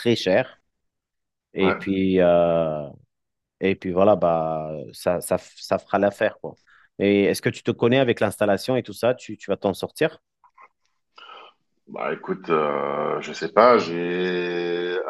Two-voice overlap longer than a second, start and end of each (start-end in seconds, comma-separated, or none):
none